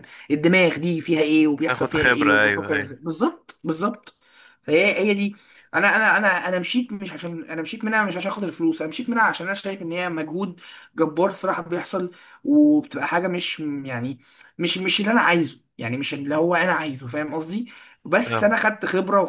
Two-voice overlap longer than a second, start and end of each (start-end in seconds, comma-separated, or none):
1.7-2.9